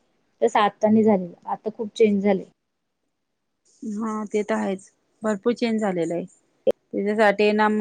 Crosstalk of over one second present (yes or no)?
no